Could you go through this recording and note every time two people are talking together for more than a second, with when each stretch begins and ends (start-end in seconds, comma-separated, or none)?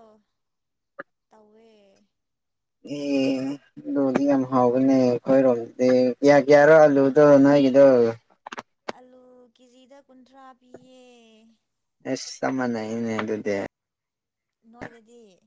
none